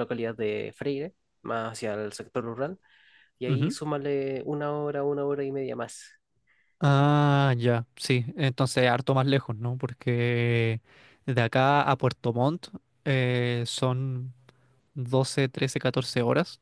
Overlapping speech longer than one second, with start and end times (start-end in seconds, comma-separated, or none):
none